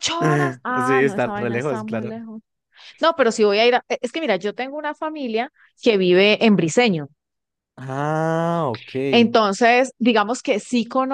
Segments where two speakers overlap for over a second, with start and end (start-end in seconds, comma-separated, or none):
0.8-2.1